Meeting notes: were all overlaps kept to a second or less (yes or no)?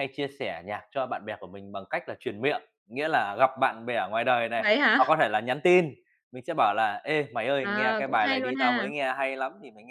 no